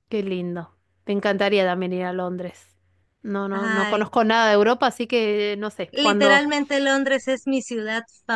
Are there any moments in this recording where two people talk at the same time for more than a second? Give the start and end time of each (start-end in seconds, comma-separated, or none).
none